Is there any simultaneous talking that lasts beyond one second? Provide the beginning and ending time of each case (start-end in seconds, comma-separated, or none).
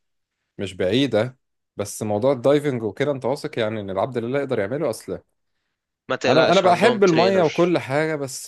6.3-7.8